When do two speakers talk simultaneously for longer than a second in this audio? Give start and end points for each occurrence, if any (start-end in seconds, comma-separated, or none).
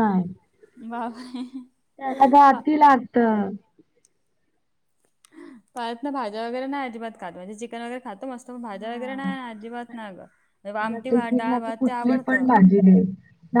10.8-12.5